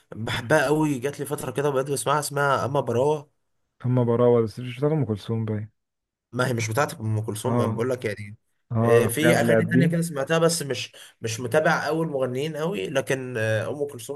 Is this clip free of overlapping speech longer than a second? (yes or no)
no